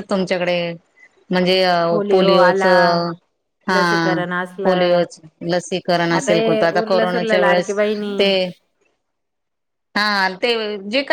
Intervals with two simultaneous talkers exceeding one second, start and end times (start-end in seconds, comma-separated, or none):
6.2-7.7